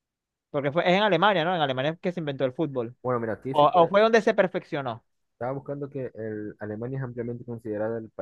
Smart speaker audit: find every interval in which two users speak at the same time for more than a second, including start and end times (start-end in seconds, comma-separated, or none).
none